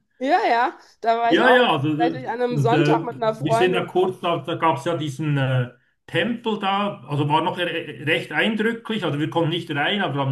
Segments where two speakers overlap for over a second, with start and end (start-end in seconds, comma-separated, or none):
1.3-3.9